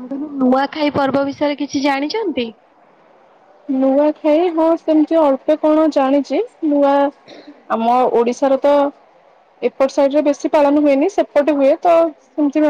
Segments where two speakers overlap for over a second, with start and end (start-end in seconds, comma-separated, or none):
none